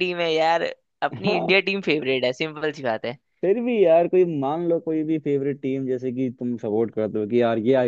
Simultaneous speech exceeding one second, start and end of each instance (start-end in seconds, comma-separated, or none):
none